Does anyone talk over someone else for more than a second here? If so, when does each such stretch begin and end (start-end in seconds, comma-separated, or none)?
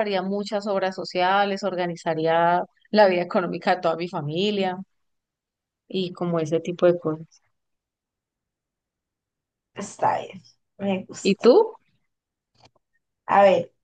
none